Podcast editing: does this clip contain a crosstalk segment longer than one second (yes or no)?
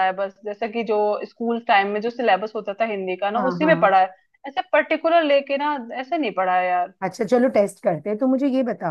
no